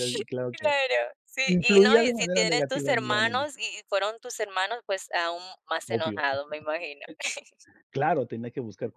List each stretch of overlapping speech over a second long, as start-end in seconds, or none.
1.4-3.5